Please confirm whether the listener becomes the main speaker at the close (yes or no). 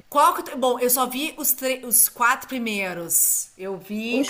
yes